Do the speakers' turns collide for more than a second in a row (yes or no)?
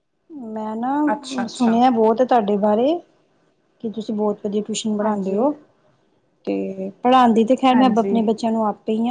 no